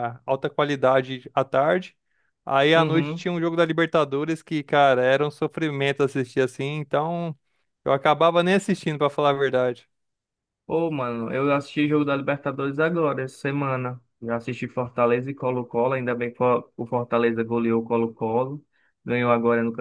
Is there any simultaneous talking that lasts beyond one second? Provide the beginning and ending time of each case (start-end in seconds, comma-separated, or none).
none